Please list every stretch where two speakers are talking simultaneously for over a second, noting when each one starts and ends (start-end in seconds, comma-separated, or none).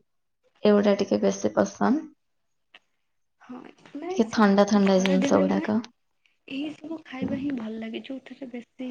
4.1-5.7